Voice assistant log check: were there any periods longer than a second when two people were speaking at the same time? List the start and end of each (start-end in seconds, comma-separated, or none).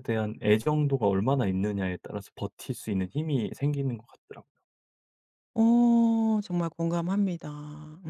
none